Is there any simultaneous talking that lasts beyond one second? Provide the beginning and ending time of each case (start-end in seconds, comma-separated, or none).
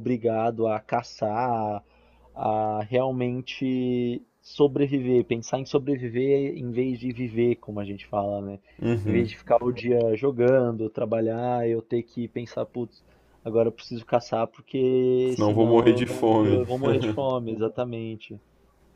15.3-16.6